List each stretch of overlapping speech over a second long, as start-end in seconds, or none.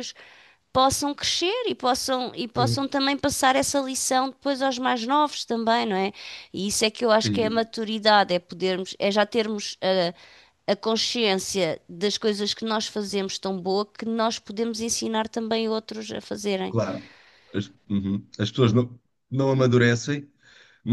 none